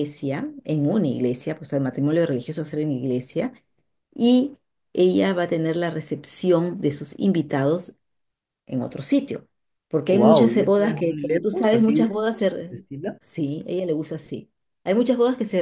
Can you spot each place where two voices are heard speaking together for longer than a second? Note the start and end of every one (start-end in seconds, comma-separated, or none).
10.1-12.1